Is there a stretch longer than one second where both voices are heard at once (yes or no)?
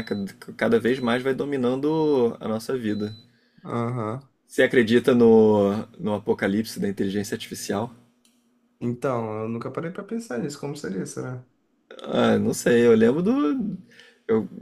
no